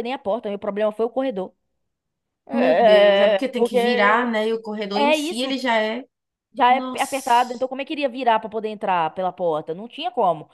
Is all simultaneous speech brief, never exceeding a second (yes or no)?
no